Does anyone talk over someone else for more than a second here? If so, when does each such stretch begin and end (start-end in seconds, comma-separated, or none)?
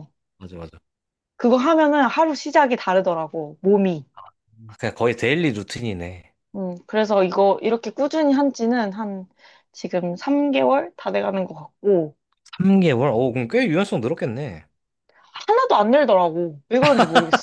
none